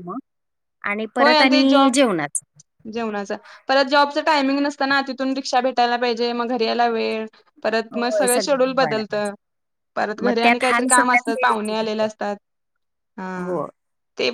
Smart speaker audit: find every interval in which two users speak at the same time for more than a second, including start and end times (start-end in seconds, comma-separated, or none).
10.2-12.1